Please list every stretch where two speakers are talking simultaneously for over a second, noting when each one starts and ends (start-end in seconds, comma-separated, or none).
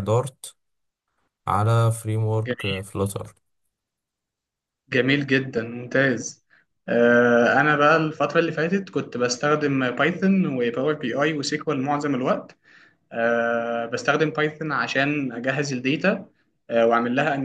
none